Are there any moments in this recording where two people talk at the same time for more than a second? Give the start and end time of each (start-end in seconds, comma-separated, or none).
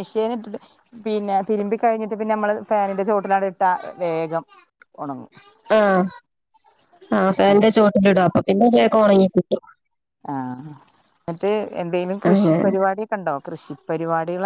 none